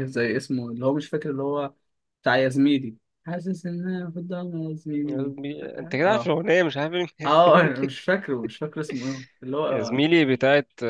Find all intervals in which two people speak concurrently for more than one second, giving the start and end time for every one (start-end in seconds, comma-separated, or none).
none